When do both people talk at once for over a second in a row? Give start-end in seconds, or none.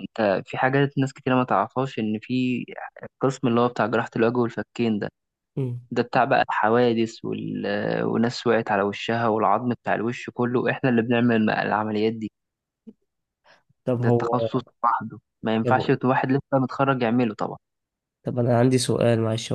none